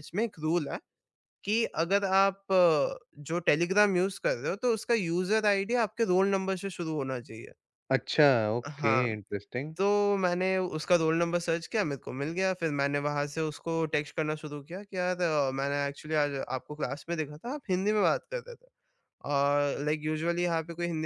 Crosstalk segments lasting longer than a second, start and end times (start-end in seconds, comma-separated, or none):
none